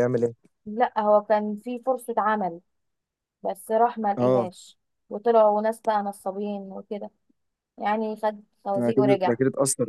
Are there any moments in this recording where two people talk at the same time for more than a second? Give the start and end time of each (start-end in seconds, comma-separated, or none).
none